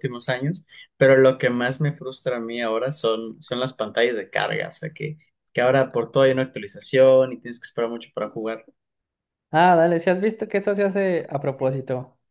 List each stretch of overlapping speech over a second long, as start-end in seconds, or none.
none